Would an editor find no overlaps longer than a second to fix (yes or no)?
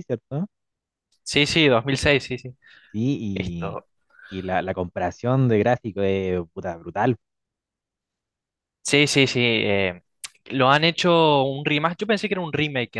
yes